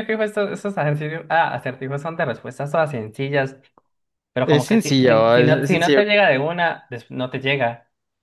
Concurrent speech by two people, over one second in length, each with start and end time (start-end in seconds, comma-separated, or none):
4.4-6.0